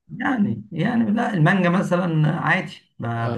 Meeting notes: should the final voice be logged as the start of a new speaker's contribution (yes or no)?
no